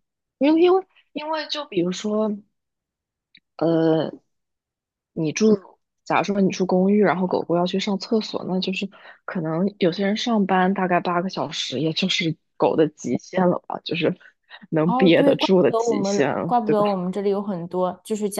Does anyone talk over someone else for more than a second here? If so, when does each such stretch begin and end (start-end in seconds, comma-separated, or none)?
14.8-16.9